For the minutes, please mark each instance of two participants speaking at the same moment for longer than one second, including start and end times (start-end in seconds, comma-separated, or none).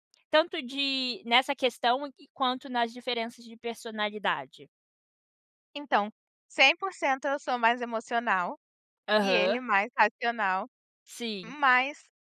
none